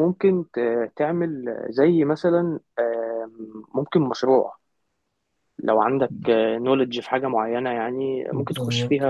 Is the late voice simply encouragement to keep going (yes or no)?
no